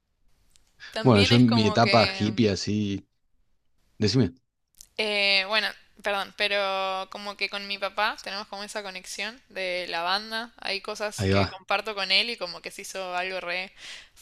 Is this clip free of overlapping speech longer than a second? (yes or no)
no